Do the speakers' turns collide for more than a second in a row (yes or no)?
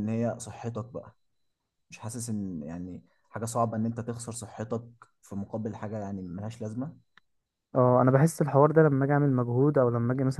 no